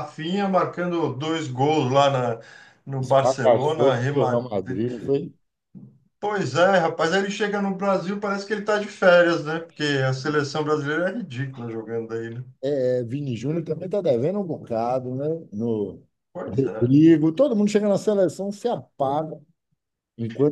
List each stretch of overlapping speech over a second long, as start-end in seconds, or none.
3.0-4.5